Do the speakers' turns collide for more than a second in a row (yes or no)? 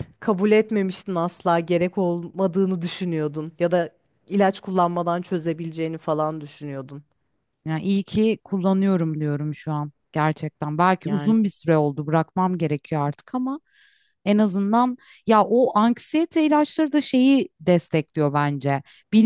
no